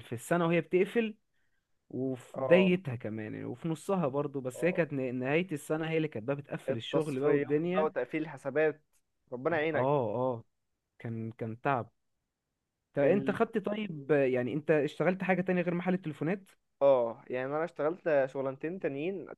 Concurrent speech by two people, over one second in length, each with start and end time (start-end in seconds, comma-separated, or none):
6.7-7.9